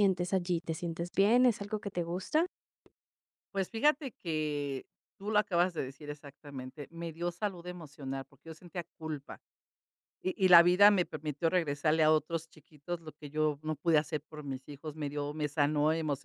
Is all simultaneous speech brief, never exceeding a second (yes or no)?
yes